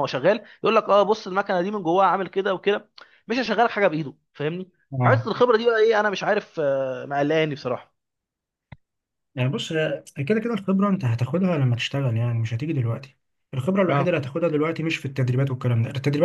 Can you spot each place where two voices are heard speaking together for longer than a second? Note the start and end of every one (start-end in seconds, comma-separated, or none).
none